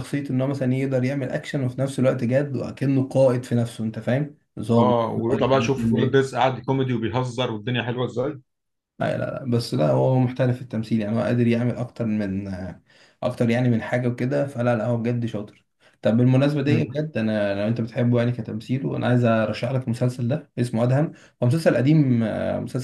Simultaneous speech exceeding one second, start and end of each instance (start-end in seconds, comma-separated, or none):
4.8-6.2